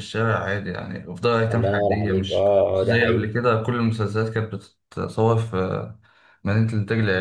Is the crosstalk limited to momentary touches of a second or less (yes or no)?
no